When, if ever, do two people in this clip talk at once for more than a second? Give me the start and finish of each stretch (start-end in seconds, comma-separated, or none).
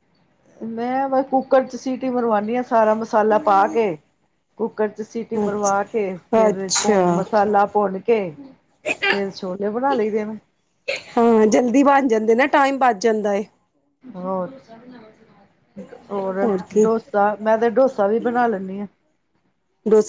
5.5-7.2